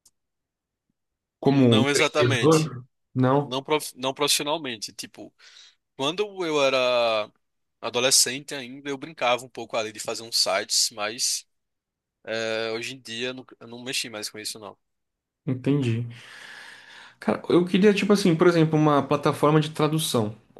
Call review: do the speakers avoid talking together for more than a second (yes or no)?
no